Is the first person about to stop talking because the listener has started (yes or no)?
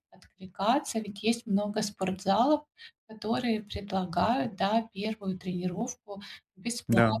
no